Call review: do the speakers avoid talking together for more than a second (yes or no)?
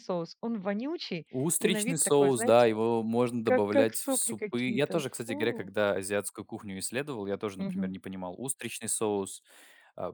no